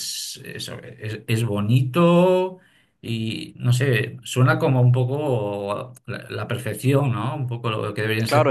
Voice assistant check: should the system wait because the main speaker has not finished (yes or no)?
no